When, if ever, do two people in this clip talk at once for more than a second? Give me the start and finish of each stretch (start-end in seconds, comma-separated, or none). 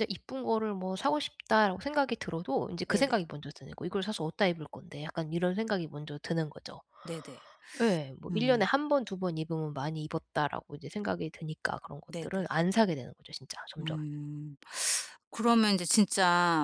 none